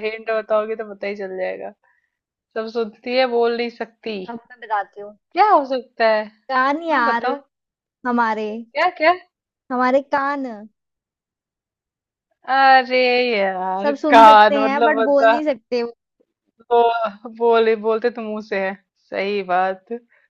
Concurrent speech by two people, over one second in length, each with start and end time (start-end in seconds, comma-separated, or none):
13.8-15.4